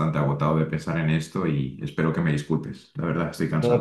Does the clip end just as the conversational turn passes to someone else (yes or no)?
yes